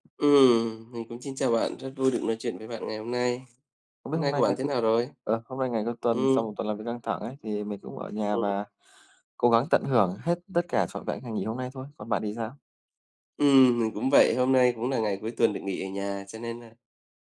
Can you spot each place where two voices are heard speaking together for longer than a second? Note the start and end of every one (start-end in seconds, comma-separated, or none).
none